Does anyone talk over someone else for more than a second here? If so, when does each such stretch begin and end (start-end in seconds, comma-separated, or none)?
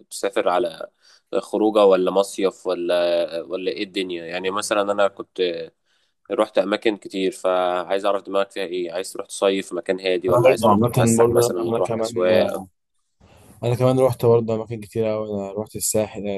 10.3-12.1